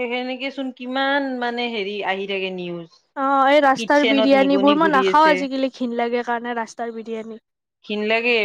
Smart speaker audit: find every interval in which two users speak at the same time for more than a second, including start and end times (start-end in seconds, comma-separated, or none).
3.8-5.3